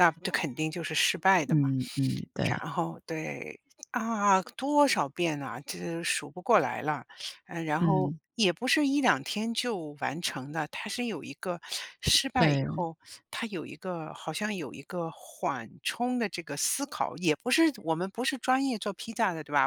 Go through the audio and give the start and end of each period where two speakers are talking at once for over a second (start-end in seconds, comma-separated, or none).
none